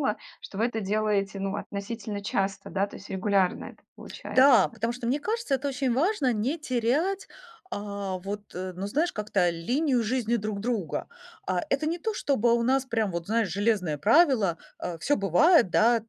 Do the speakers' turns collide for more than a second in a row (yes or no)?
no